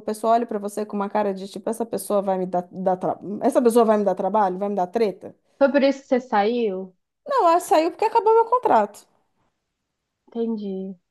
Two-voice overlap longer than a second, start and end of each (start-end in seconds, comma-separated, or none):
none